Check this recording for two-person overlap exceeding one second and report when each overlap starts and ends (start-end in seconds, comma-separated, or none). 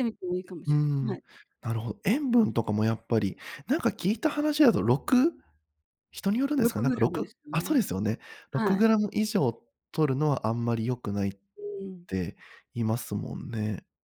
6.6-7.9